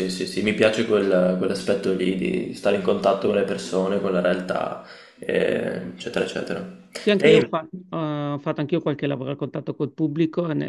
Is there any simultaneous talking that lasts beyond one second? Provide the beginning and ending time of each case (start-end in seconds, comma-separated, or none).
none